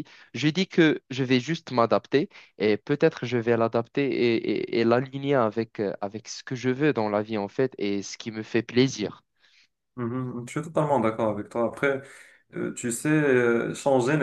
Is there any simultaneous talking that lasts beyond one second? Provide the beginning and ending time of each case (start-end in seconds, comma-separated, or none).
none